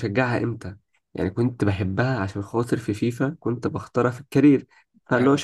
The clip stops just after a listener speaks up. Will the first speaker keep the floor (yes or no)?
yes